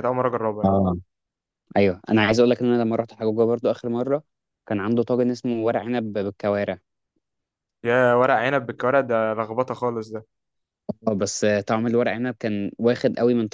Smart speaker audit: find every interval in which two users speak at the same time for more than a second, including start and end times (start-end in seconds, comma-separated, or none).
none